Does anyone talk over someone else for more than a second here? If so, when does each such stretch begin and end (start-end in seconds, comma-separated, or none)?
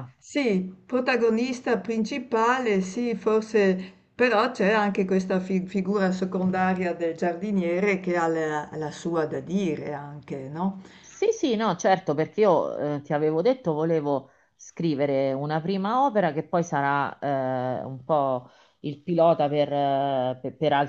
none